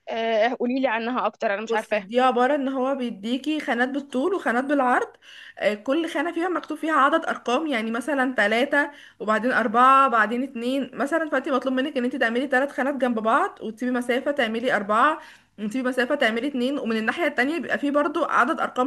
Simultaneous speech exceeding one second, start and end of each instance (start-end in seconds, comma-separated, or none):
none